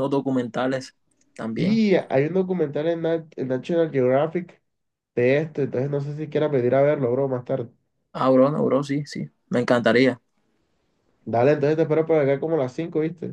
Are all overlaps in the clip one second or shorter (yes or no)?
yes